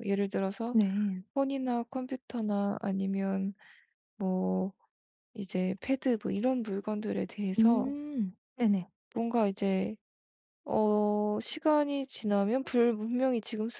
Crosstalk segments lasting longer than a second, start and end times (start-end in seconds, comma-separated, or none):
none